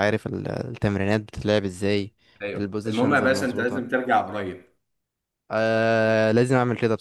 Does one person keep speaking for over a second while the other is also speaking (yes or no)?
yes